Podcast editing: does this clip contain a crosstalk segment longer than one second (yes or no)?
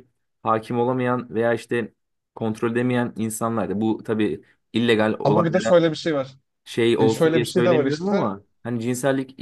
yes